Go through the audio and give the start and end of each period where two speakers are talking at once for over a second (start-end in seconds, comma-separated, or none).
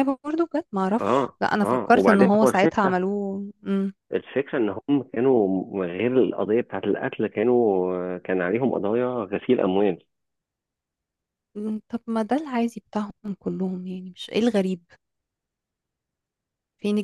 1.0-3.0